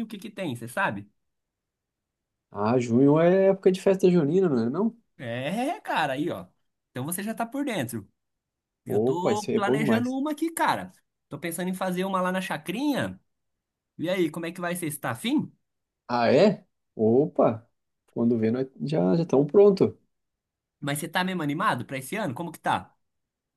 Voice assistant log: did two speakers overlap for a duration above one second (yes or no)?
yes